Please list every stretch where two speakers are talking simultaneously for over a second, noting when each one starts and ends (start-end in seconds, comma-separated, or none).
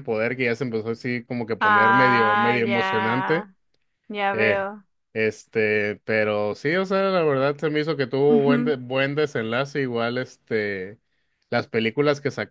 1.6-3.5